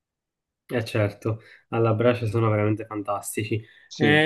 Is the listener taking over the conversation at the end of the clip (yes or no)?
no